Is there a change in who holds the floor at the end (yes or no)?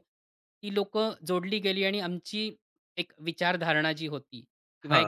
no